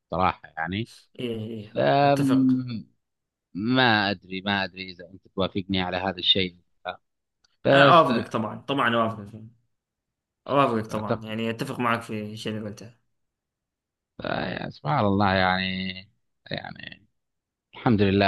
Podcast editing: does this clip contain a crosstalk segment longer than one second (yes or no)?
no